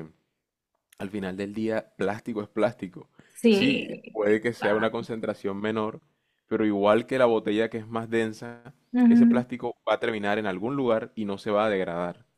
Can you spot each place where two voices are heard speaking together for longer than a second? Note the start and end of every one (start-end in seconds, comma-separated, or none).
3.5-4.9